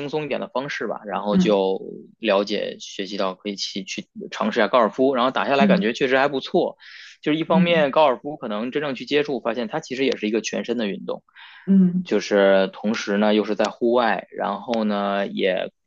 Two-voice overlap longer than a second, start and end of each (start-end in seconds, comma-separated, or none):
none